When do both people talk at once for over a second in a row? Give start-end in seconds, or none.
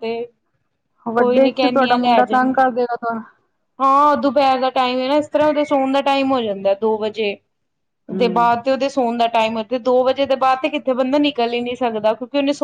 1.2-2.5